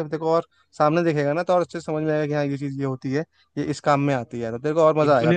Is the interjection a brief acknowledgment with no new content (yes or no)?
no